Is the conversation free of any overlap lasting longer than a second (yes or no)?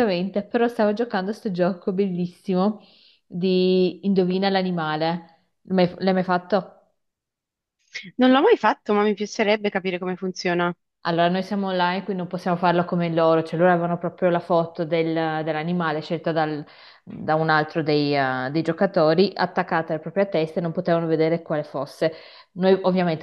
yes